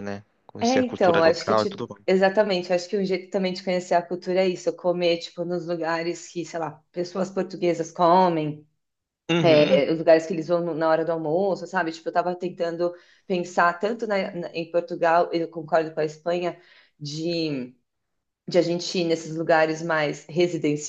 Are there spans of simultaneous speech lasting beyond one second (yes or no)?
yes